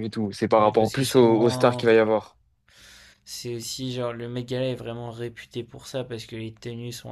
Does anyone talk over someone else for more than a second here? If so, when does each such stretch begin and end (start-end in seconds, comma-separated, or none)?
0.6-1.9